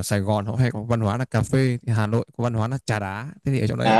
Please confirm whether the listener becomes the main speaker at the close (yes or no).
yes